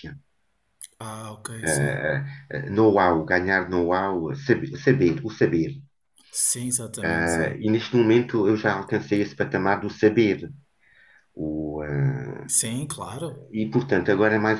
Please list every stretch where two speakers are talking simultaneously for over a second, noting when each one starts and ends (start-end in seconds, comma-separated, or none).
none